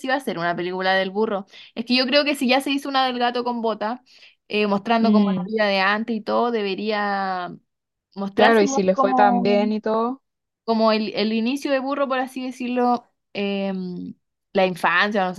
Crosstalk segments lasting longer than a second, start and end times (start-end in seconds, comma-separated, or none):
8.3-9.7